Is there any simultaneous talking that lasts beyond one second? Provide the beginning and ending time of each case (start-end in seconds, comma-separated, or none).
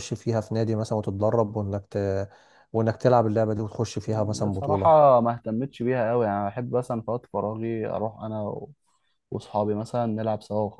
none